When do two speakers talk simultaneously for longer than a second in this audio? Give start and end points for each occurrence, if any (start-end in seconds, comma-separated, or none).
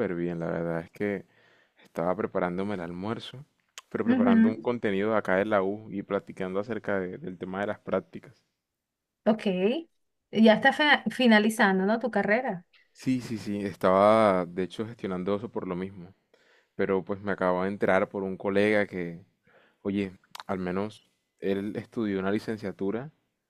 none